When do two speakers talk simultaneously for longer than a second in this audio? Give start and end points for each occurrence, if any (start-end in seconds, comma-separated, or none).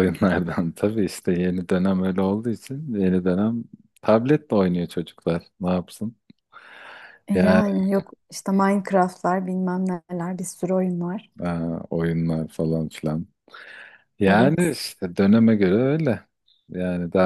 none